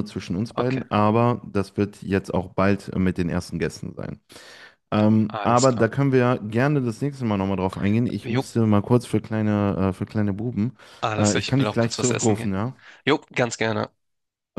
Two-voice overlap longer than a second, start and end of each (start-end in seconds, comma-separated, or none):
11.2-12.6